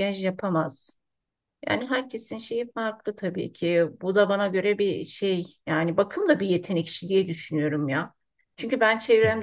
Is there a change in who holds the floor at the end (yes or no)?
no